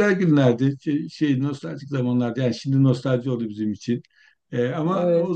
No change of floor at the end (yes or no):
yes